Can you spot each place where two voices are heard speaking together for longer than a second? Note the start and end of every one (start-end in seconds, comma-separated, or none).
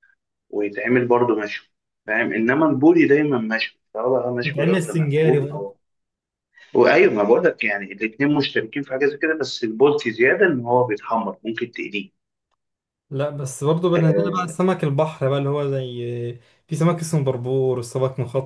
4.4-5.7